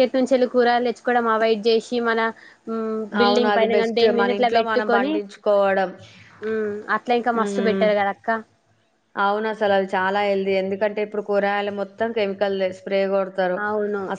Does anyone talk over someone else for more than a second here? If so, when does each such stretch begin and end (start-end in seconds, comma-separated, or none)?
3.2-5.1